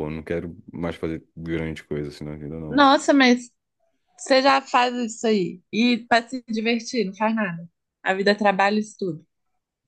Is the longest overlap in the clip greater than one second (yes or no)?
no